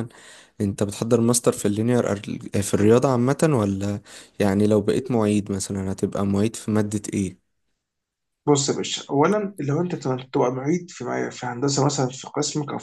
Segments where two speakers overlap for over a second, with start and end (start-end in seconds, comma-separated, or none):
none